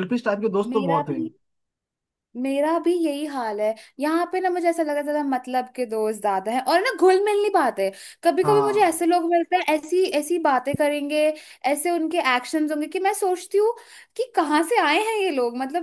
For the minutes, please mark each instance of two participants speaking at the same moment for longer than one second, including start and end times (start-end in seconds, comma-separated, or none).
none